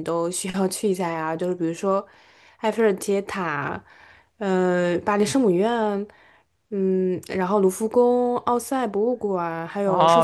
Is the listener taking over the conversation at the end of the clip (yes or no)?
yes